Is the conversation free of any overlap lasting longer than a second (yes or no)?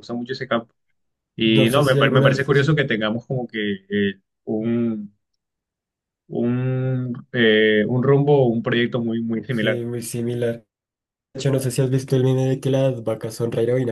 no